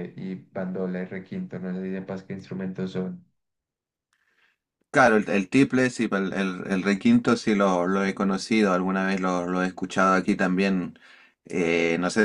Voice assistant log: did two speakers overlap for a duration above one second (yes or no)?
no